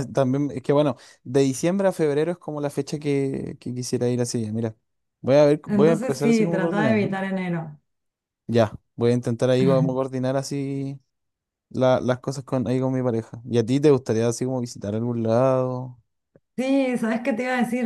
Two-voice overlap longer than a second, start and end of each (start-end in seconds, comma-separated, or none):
5.7-7.0